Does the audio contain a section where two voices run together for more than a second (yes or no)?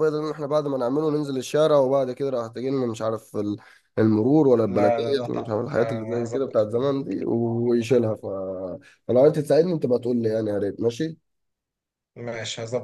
yes